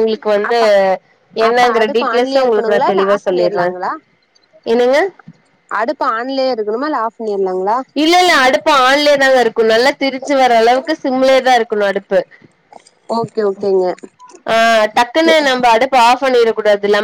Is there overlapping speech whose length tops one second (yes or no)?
yes